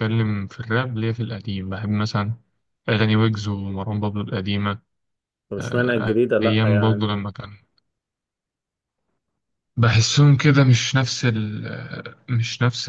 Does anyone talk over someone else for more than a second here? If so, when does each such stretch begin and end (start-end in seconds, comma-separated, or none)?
5.6-7.1